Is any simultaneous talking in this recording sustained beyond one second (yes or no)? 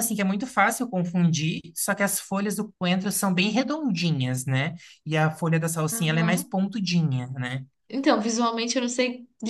no